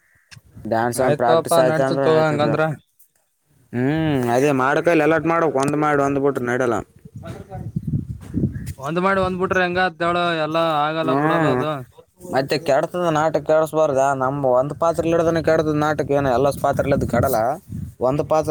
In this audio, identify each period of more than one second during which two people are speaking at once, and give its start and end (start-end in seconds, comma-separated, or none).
1.1-2.5